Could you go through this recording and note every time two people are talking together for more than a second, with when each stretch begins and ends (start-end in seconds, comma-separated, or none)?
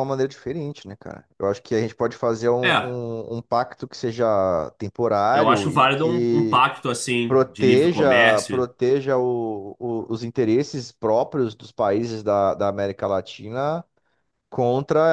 5.3-6.6, 7.3-8.7